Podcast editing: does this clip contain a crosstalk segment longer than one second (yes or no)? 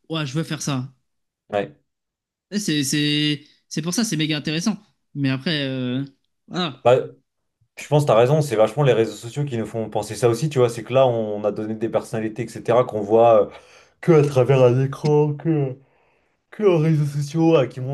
no